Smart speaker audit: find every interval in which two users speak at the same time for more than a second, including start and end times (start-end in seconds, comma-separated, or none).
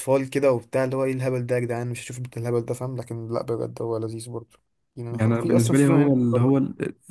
5.1-6.6